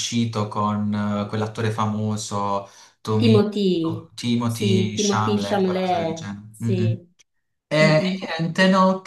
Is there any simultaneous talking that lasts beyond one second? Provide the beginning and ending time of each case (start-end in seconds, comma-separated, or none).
4.4-7.0